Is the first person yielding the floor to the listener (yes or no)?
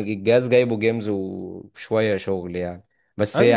yes